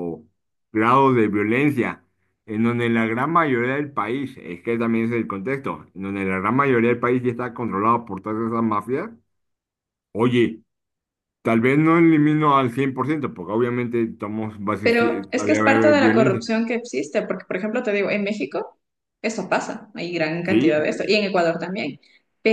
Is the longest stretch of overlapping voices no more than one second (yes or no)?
no